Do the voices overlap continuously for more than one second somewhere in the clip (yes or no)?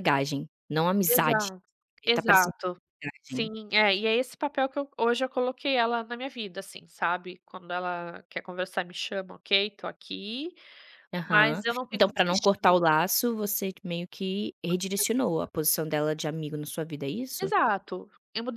yes